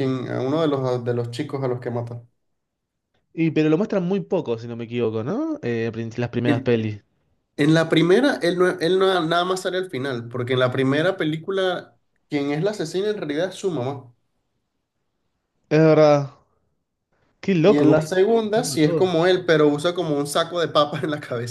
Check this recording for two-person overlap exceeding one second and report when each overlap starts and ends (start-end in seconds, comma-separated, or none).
17.6-19.1